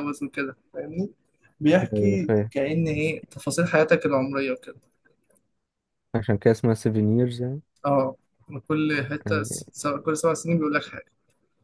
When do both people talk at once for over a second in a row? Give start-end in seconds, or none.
none